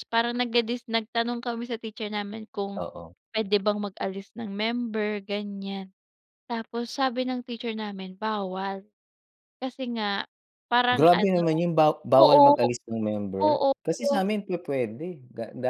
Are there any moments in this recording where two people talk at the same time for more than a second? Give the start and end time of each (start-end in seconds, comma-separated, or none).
none